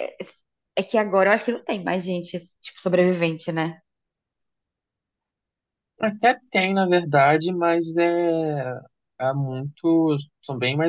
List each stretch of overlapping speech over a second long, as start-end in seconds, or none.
none